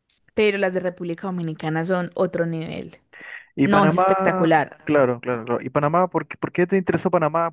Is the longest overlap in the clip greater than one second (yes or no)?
yes